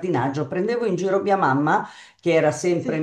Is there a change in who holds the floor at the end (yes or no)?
no